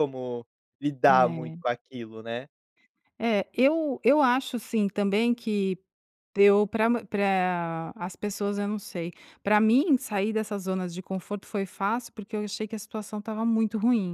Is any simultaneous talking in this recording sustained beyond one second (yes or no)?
no